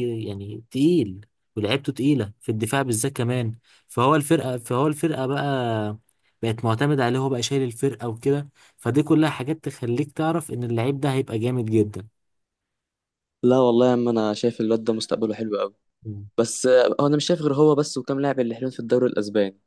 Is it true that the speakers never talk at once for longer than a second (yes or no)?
yes